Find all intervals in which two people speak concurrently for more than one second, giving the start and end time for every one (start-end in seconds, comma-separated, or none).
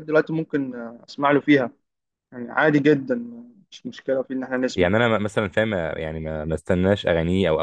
none